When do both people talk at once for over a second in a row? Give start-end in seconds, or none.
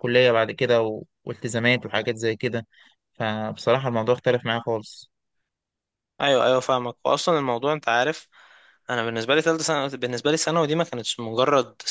none